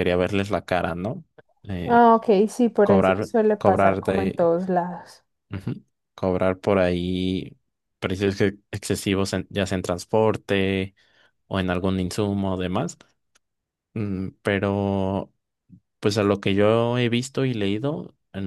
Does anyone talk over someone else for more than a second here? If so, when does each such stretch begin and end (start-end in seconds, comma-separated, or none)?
2.8-4.5